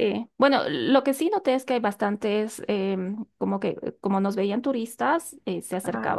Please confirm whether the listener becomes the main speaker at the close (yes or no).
no